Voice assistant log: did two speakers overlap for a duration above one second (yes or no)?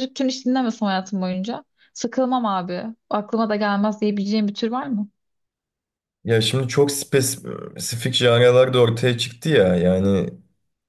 no